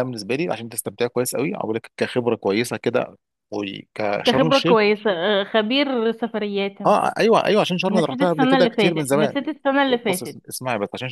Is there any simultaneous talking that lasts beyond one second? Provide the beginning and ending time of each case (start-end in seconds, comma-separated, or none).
7.9-9.3